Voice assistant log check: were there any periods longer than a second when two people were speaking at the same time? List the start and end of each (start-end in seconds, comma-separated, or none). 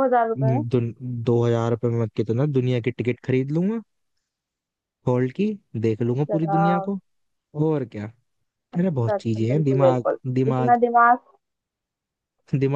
8.8-10.8